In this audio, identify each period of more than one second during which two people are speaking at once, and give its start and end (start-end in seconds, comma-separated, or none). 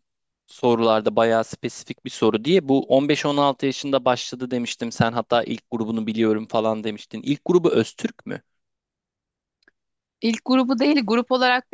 none